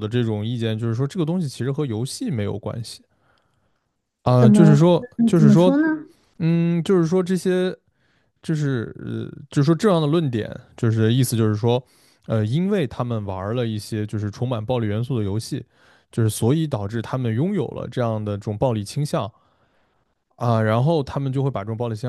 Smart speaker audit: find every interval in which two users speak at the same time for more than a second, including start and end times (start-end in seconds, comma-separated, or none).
4.4-5.7